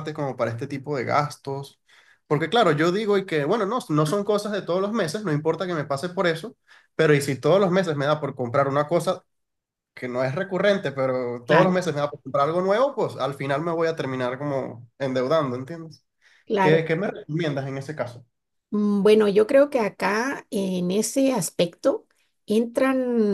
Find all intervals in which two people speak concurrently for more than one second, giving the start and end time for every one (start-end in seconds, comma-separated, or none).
none